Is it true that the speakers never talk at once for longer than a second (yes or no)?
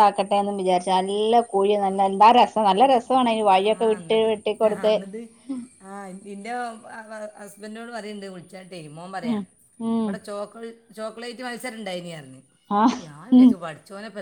yes